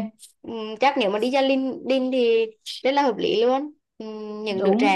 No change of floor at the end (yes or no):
yes